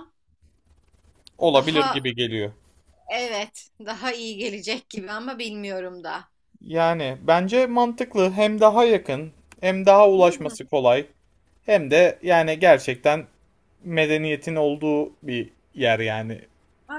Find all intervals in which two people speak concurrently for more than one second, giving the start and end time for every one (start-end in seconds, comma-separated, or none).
none